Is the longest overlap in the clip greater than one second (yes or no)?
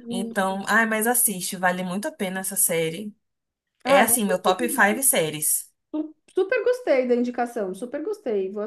yes